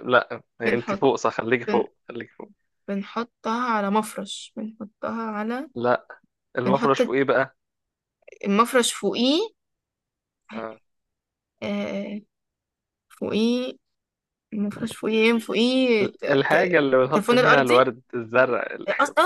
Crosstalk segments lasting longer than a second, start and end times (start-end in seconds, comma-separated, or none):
16.0-17.9